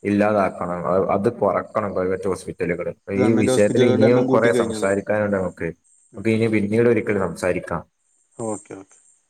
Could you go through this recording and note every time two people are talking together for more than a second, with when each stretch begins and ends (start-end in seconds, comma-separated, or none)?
3.2-5.1